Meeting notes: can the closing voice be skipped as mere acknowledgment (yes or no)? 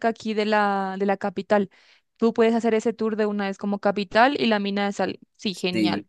no